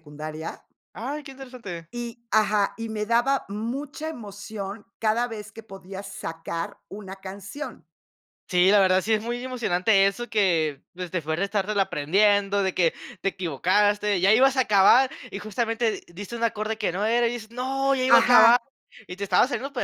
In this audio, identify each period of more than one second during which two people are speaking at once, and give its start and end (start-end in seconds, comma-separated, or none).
none